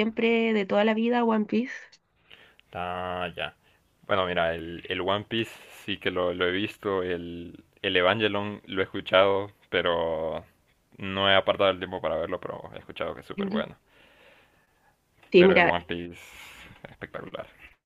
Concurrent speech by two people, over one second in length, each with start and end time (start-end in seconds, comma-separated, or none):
none